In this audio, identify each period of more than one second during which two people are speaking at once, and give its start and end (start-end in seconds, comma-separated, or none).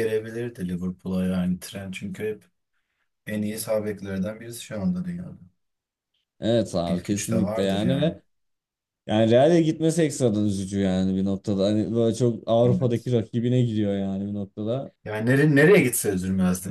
6.8-8.2